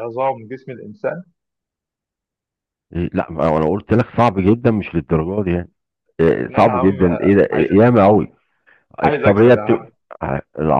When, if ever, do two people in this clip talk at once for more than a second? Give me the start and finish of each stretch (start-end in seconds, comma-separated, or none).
6.3-7.7